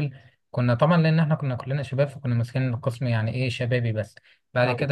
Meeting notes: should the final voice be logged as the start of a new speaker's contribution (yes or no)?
no